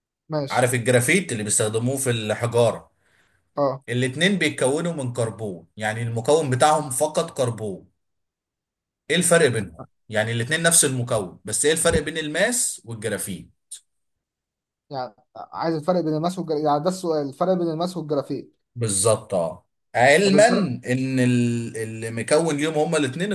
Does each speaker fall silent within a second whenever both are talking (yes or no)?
yes